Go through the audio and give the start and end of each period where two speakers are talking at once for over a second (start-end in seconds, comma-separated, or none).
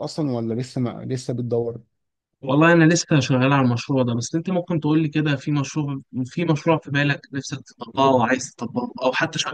none